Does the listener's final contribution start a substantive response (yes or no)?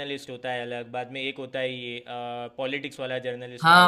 yes